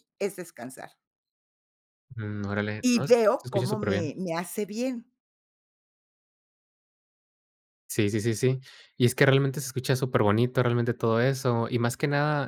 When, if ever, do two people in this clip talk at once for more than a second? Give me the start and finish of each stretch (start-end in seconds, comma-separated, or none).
2.8-4.1